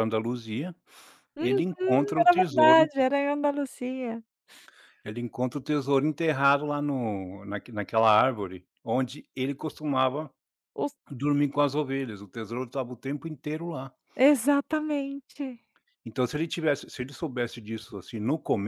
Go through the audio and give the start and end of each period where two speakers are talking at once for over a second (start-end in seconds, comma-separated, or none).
1.4-2.9